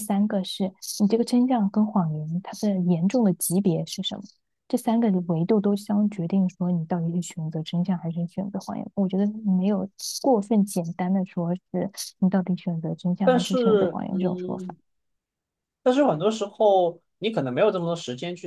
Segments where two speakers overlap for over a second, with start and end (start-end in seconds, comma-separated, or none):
13.2-14.7